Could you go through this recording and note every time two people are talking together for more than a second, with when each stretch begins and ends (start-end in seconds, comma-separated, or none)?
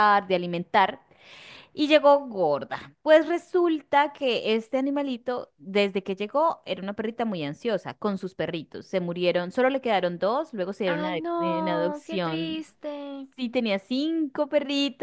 10.8-12.6